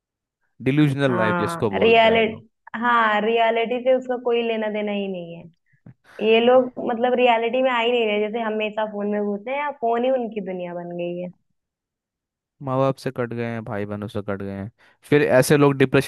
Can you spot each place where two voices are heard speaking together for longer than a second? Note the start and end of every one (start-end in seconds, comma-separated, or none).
1.1-2.4